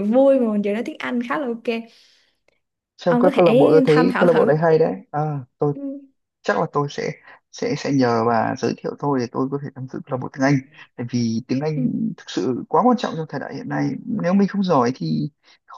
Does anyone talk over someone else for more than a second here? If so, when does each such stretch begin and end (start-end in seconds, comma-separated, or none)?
3.1-4.5